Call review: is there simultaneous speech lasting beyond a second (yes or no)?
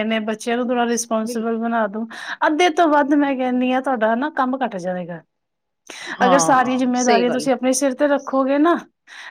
yes